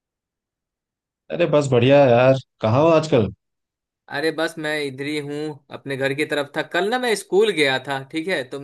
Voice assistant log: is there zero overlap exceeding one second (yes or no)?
yes